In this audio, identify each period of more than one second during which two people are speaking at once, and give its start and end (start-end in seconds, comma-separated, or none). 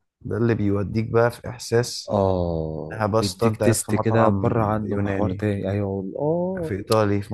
2.9-5.5